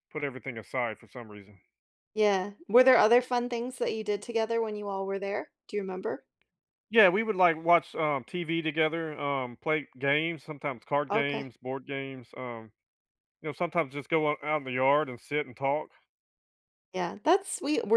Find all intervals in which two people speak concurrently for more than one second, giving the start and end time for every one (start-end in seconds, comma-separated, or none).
none